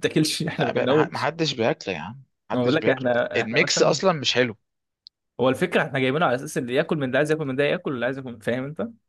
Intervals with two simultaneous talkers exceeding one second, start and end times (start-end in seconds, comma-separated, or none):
2.5-4.0